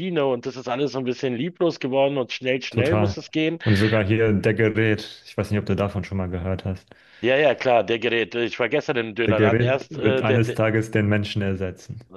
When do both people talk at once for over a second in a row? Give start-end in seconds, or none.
9.2-10.6